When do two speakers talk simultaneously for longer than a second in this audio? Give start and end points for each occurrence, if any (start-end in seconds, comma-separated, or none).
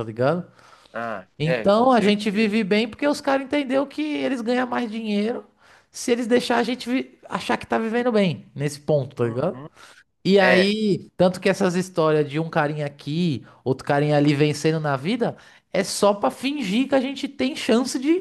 1.4-2.6